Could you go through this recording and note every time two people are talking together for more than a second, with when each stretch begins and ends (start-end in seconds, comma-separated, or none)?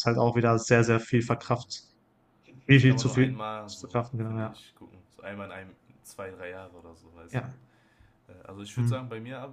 2.7-4.6